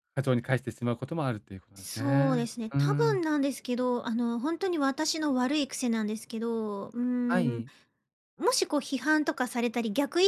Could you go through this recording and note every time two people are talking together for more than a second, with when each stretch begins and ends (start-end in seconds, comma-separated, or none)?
1.8-3.2